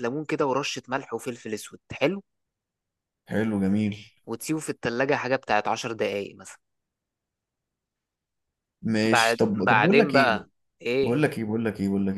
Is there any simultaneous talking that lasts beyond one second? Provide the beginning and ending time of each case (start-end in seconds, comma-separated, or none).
9.0-10.4